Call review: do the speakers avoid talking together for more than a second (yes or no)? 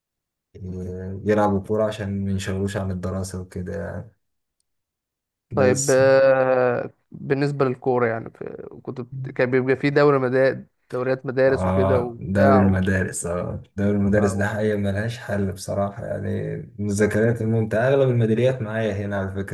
no